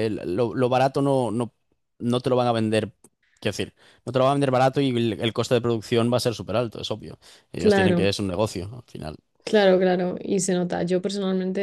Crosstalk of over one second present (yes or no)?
no